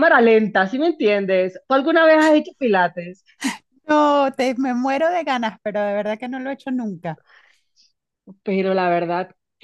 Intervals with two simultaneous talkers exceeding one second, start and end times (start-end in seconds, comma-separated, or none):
none